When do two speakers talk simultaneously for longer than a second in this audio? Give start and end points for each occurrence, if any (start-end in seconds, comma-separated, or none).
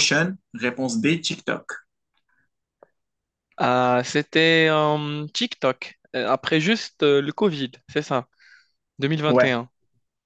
none